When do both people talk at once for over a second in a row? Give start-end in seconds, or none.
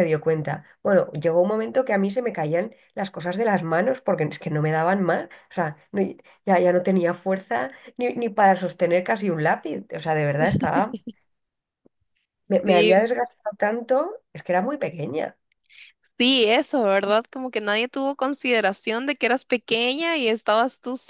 none